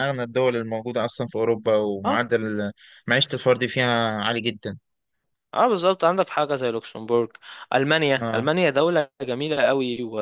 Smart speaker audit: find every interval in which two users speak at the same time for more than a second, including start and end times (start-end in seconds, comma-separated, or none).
none